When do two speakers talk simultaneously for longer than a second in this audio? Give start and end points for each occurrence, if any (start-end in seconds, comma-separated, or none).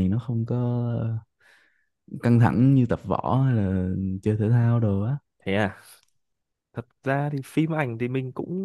none